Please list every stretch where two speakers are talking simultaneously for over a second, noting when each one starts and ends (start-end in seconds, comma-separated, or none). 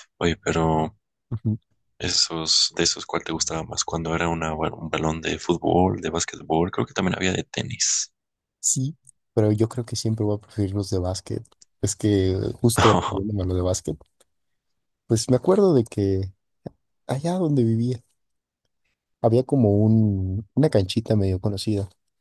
none